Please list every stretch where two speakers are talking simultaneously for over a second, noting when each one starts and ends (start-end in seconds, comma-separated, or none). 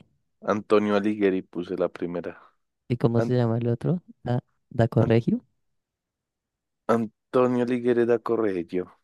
none